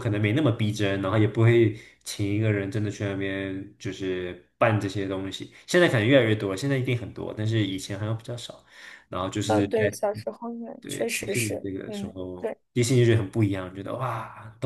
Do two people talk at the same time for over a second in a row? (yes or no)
yes